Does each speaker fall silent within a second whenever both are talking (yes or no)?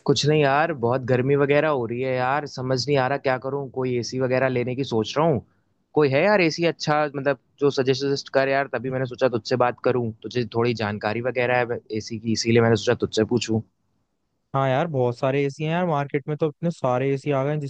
yes